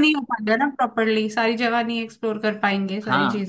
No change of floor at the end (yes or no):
no